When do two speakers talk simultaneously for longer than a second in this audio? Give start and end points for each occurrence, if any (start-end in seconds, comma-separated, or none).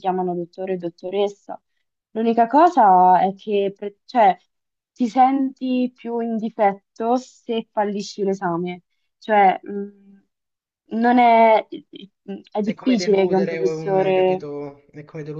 12.6-14.5